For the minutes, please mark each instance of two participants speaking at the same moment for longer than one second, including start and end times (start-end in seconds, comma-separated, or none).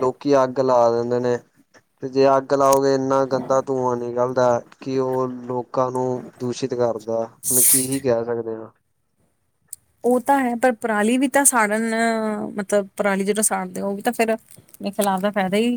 none